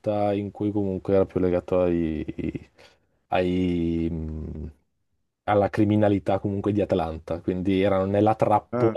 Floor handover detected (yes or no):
no